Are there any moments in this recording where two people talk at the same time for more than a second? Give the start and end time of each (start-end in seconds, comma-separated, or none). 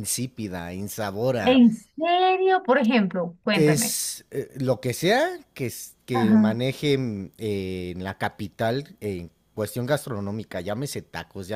none